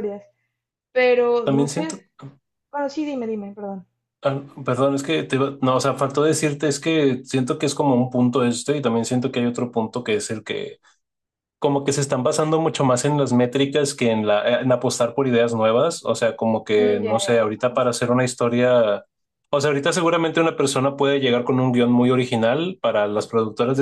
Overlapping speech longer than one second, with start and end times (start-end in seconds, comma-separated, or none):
none